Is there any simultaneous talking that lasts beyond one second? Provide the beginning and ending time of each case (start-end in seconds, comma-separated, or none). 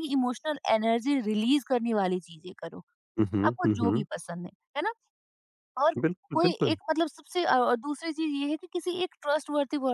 none